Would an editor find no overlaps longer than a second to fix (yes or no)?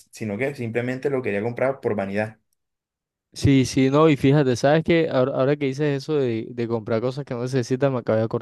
yes